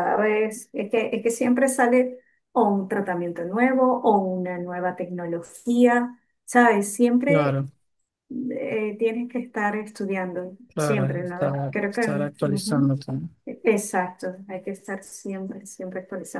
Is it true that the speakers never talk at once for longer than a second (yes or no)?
no